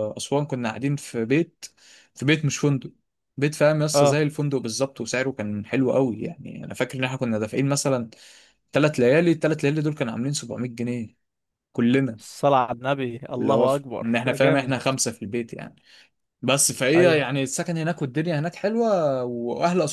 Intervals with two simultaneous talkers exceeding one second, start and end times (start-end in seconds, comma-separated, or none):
13.3-14.7